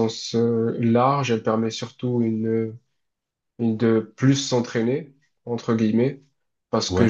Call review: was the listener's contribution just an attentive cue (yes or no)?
yes